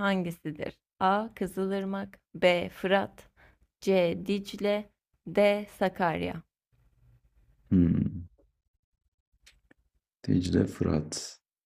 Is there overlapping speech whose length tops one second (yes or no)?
no